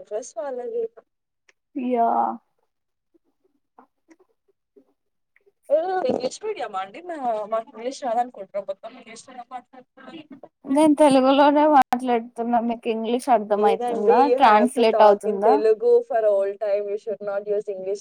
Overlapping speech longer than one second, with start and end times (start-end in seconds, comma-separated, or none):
13.6-15.5